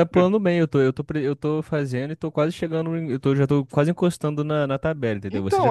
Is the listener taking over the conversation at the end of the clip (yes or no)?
yes